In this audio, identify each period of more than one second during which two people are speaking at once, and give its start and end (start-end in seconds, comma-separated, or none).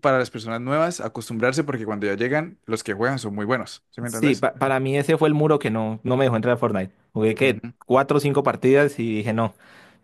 none